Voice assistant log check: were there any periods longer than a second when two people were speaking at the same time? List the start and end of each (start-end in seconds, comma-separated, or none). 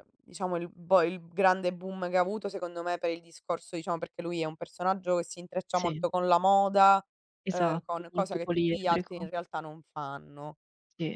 7.5-9.3